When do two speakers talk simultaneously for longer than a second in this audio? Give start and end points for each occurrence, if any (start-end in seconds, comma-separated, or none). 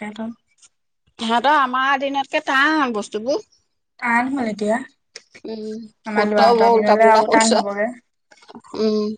6.1-7.9